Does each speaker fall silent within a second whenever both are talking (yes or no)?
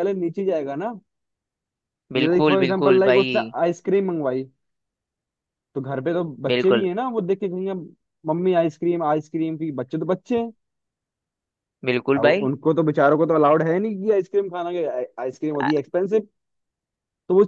no